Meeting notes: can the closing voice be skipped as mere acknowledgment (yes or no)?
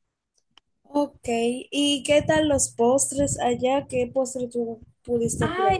no